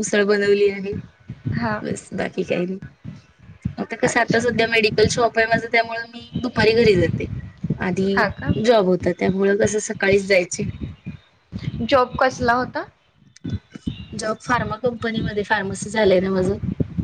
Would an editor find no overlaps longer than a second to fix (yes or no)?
yes